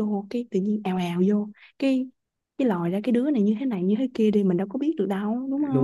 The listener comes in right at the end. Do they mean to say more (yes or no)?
yes